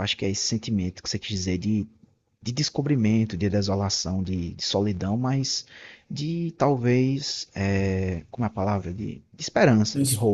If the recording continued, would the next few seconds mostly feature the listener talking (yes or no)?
yes